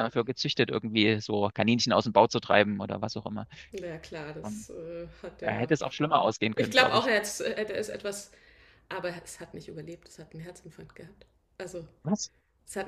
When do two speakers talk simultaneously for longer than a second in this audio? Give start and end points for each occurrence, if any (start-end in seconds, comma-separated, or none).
none